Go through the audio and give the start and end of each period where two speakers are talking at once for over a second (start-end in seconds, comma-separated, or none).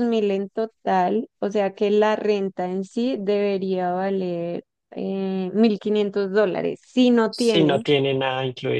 none